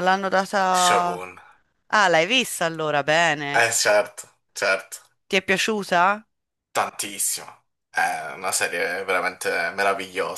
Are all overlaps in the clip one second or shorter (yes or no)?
yes